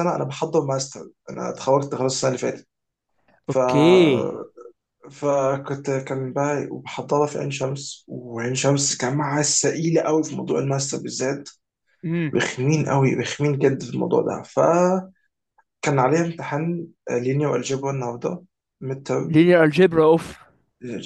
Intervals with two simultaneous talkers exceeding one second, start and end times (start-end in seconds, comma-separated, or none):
none